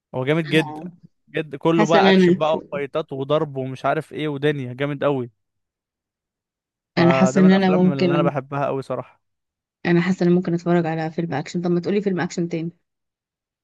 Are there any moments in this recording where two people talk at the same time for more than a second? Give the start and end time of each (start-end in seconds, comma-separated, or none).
7.0-8.3